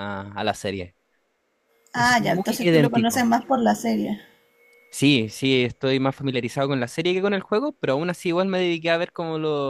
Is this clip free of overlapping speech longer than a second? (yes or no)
no